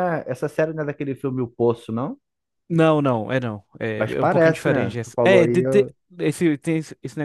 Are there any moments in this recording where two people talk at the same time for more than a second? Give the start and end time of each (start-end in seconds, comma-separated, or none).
4.0-5.9